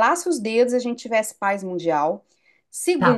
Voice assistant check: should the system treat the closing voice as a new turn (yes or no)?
yes